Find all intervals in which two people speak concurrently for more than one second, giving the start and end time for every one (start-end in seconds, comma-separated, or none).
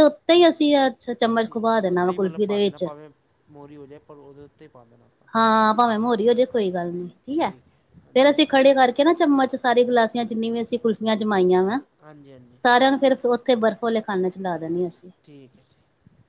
1.4-2.9